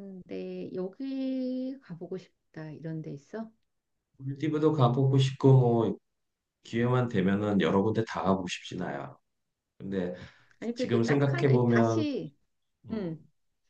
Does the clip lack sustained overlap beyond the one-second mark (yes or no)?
no